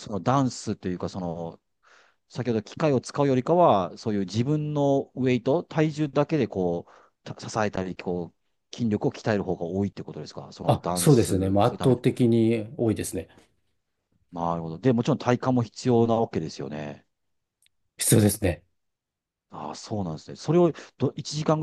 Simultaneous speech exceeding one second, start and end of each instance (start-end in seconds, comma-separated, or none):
10.7-12.0